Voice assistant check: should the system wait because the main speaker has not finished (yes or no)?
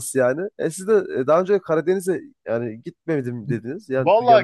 no